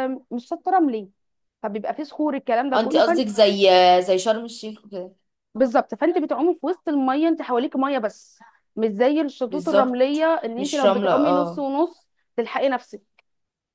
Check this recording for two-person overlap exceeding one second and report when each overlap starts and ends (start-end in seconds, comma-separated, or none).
9.5-11.7